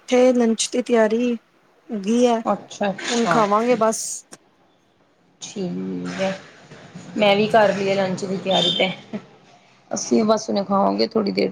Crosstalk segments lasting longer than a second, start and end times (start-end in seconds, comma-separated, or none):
none